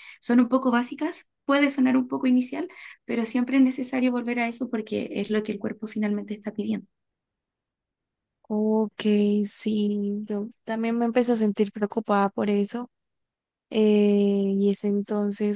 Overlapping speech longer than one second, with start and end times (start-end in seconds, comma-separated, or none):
none